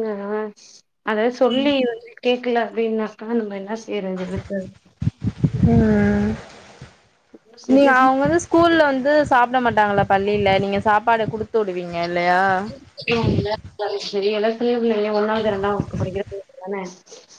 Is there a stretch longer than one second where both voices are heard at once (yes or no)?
no